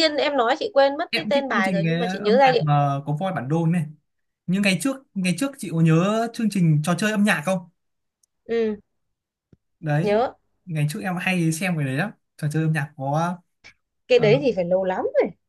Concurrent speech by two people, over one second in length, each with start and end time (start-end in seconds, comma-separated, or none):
1.1-2.6